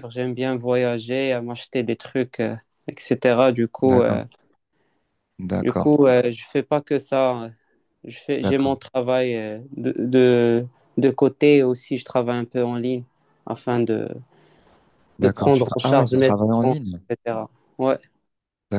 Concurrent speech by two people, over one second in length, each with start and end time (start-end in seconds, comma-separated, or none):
15.2-17.0